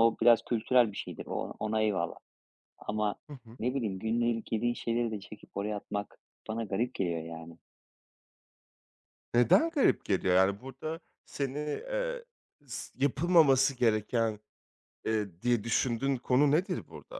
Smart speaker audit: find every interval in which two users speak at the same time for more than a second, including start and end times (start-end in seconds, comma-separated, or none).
none